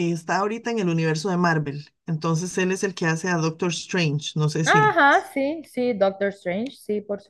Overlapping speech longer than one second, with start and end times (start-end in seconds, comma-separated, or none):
none